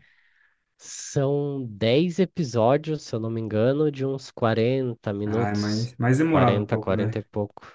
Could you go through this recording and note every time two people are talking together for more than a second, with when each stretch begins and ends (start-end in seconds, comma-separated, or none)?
5.2-7.2